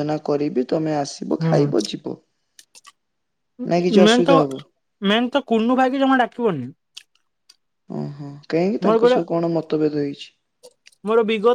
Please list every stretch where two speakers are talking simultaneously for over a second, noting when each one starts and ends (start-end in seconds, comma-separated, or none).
none